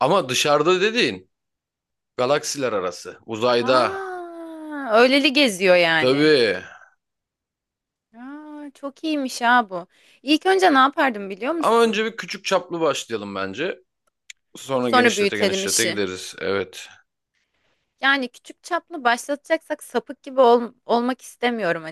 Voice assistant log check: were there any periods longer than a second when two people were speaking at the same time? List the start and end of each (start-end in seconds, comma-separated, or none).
14.8-16.0